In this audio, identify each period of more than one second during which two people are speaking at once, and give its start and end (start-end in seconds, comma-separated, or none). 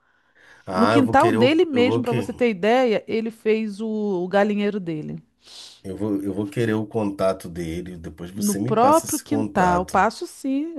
0.8-2.1, 8.3-10.0